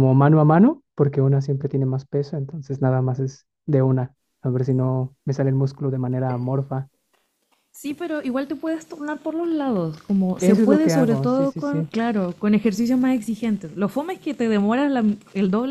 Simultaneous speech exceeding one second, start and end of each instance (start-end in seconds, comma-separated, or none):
10.4-11.9